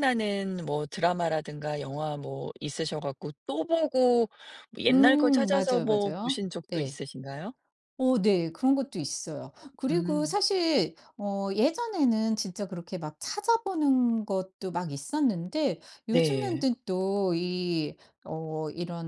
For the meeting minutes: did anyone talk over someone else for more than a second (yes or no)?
yes